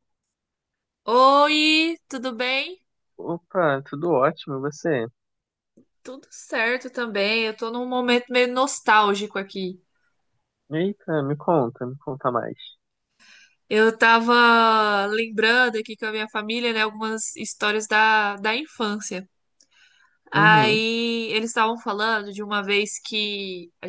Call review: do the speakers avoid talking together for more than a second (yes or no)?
yes